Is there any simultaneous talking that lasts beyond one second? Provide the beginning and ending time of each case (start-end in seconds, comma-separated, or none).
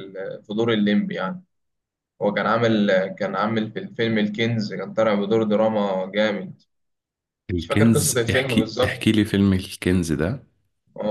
7.6-9.0